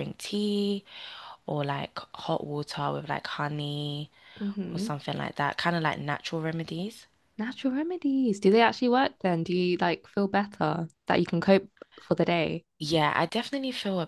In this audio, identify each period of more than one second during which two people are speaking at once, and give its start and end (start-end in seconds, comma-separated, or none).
none